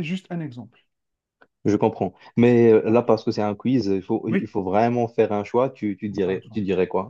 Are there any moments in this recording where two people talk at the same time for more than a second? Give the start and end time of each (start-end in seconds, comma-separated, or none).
none